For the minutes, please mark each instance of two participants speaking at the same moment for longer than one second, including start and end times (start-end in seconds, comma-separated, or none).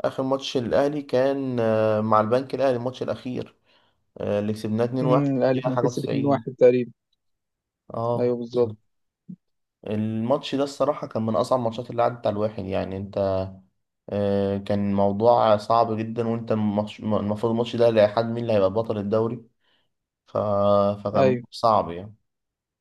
5.0-6.6